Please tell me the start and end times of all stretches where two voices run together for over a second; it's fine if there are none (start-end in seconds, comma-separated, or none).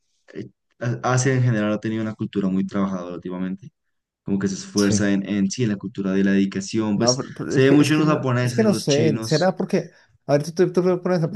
6.9-9.6